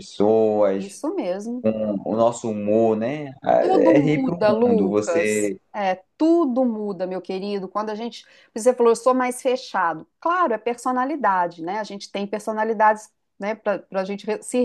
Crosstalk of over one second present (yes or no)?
yes